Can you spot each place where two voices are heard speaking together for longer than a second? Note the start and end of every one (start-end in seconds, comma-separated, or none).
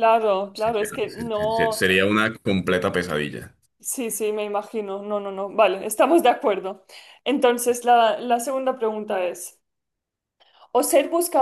0.5-1.9